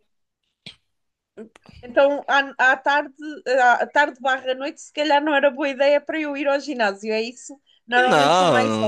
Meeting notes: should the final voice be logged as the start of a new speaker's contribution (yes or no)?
yes